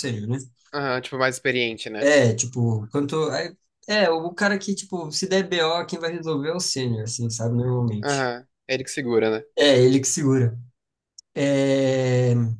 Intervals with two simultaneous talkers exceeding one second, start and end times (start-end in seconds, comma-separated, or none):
none